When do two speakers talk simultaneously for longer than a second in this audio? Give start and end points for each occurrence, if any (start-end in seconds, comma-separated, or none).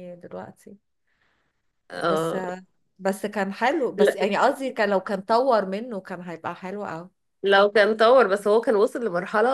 none